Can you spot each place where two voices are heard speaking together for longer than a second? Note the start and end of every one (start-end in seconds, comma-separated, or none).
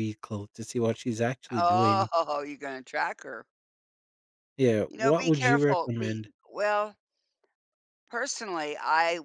4.9-6.3